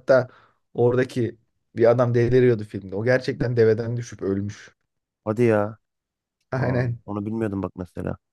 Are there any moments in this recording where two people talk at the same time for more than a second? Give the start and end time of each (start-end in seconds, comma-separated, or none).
none